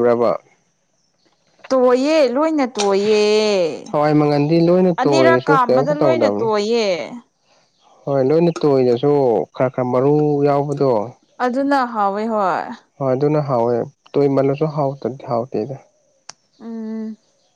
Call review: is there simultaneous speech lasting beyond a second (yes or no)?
yes